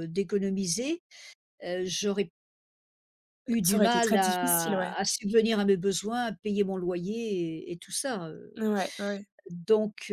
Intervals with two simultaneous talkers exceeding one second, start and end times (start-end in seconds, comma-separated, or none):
3.6-4.9